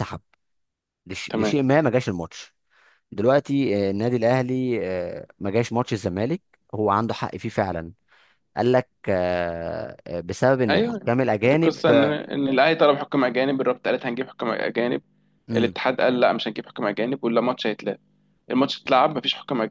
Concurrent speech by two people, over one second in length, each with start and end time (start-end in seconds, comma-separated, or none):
10.7-12.2